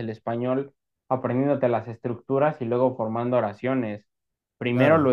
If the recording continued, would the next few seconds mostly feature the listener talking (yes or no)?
no